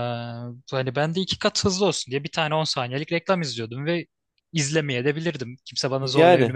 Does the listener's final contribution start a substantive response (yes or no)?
yes